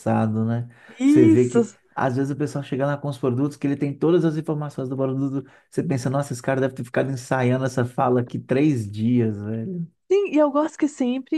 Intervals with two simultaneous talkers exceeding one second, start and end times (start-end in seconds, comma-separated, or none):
none